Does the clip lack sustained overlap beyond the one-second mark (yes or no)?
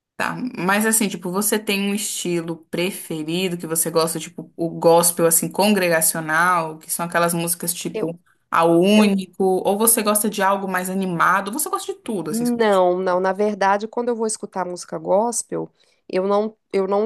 yes